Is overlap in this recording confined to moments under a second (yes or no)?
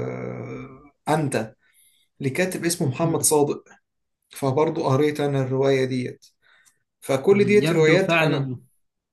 no